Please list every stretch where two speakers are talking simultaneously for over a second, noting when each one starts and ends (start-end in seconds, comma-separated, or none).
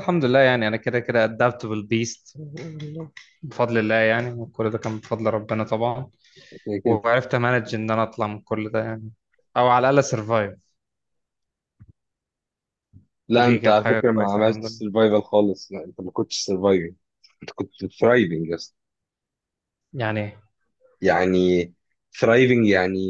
13.3-14.8